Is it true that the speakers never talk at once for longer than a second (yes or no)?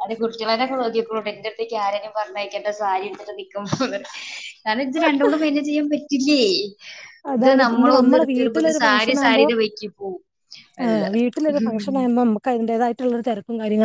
no